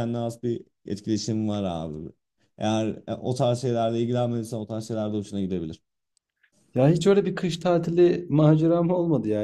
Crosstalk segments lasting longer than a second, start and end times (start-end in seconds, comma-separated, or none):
none